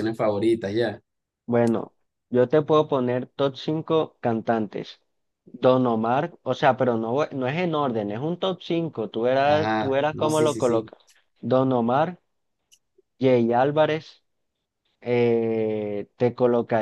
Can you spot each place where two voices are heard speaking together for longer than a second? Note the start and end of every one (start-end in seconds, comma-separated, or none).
9.4-10.9